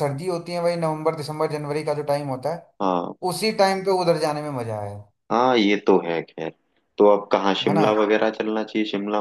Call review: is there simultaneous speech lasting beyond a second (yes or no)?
no